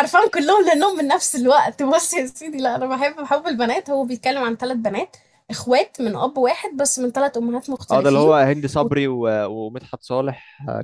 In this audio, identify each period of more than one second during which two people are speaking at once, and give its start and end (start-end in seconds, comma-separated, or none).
none